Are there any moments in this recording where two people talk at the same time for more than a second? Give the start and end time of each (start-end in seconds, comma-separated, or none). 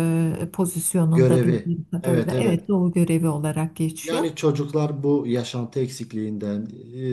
1.1-2.7